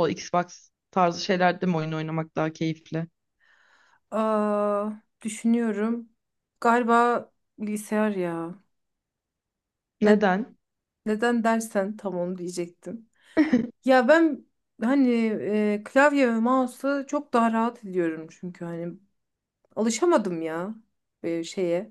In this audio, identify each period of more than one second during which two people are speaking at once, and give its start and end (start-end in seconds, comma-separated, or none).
none